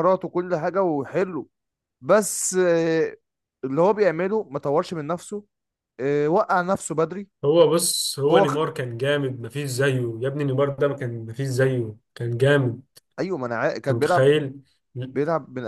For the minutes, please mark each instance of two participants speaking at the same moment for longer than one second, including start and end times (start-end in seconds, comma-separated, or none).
none